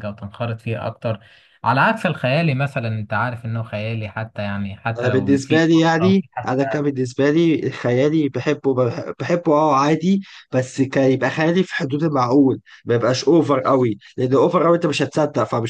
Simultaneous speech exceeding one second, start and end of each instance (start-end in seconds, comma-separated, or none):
5.0-6.9